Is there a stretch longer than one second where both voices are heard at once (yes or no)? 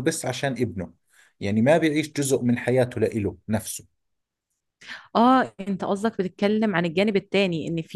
no